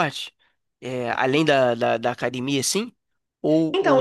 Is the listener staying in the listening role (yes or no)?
no